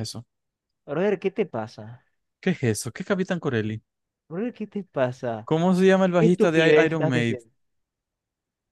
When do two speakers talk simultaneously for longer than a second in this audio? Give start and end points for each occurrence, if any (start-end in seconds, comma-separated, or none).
6.2-7.4